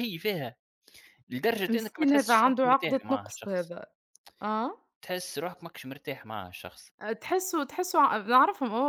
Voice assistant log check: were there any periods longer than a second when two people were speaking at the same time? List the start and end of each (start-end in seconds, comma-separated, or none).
1.7-3.7